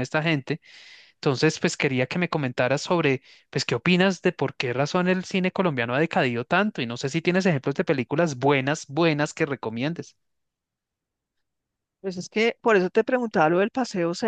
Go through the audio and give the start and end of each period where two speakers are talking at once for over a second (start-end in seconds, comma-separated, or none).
none